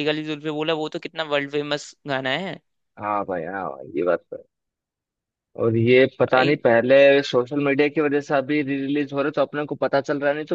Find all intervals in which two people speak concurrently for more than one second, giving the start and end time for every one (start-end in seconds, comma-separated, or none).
none